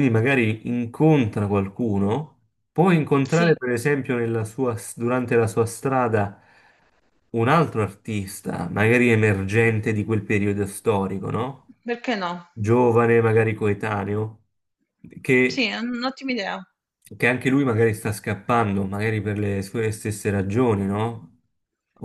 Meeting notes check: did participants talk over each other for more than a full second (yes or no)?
no